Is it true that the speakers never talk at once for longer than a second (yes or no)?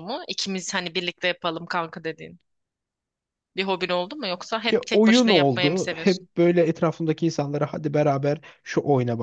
no